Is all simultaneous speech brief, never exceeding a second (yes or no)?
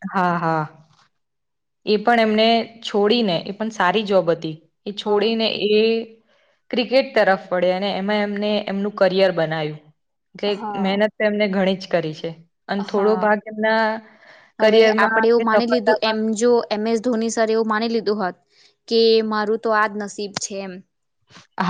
no